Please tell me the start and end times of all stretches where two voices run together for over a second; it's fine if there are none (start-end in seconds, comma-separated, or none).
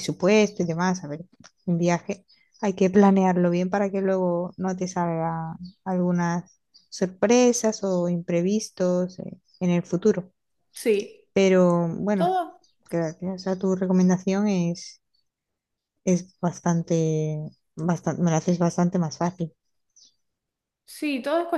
none